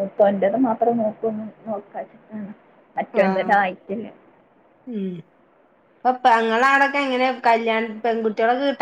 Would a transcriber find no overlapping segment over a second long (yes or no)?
yes